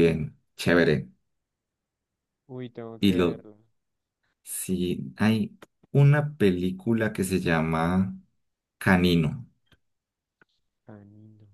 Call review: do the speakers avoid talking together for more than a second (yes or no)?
yes